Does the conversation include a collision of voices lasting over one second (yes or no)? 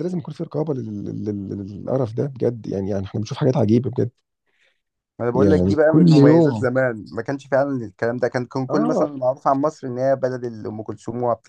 yes